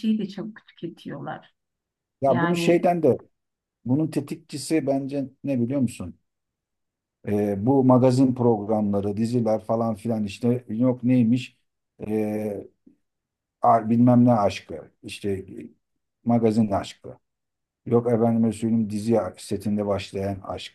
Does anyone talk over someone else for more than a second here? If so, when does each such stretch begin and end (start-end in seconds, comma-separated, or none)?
none